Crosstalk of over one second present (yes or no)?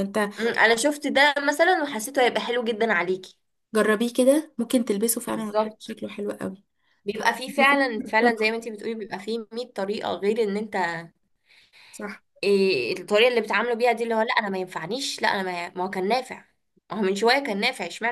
no